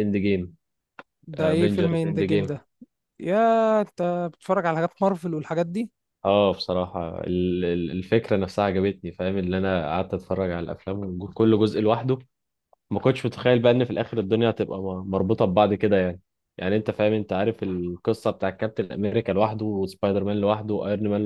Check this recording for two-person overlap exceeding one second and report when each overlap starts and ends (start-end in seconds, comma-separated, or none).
1.4-2.6